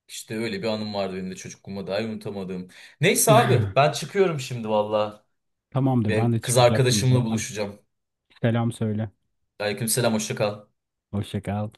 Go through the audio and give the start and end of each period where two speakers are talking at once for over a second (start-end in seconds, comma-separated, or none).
6.1-7.4